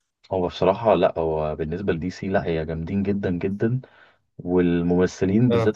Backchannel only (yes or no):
yes